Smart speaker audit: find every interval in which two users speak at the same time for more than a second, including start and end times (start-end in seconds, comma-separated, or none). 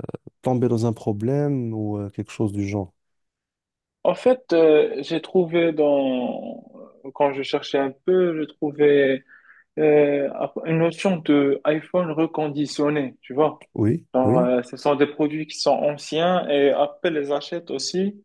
none